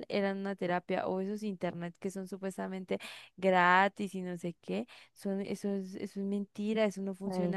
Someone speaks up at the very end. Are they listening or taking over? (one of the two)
listening